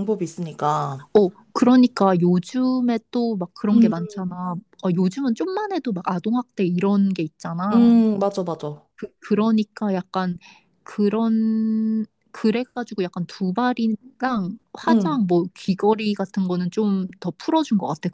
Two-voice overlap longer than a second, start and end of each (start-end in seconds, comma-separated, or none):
none